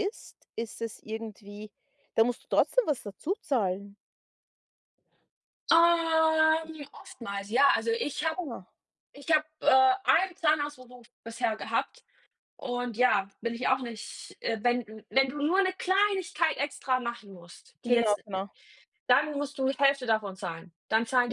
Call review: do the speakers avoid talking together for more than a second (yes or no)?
yes